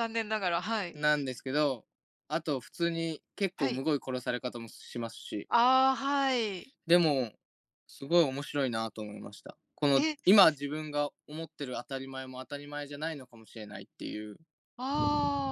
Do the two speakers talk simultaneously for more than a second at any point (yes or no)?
no